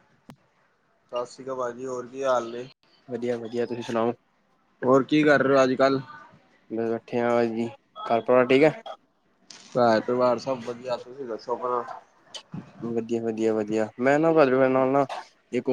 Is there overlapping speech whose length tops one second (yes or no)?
no